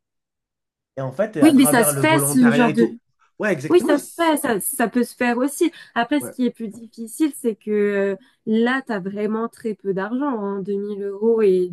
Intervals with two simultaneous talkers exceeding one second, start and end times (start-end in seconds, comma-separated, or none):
1.4-3.0